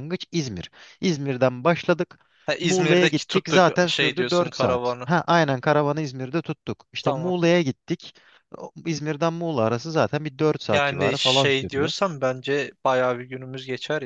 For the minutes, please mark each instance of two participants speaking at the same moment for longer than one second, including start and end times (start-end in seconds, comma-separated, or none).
2.6-5.1, 10.7-11.9